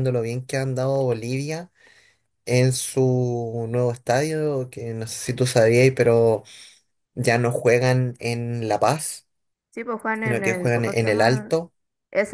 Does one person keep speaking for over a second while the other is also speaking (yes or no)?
yes